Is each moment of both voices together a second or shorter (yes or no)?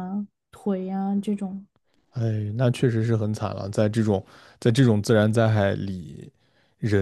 yes